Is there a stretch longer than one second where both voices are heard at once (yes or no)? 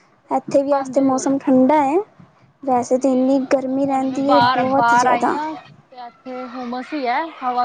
yes